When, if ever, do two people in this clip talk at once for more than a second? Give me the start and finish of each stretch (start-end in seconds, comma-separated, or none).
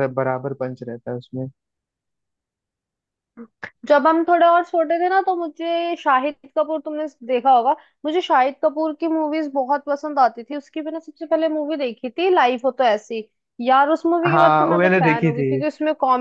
14.3-15.5